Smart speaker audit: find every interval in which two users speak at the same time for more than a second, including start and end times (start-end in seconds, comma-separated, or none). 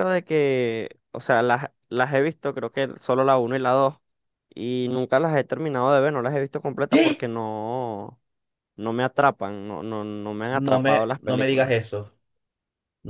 10.5-11.7